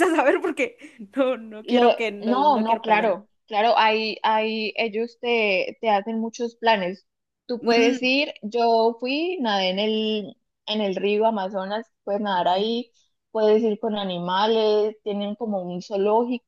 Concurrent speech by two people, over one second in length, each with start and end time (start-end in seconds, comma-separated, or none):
1.6-3.2